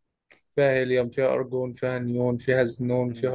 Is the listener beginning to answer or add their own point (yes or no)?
yes